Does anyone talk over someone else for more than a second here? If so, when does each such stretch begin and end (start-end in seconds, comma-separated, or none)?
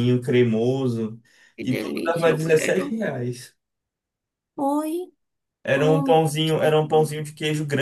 1.6-3.0